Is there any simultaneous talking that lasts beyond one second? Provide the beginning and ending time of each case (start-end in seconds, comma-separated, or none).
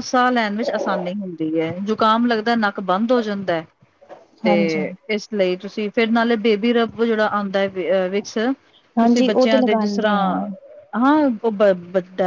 9.0-10.4